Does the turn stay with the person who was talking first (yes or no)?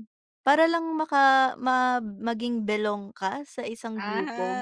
no